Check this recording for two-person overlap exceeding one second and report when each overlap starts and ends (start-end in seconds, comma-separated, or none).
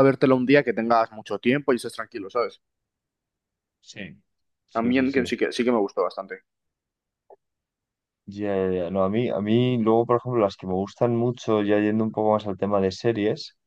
none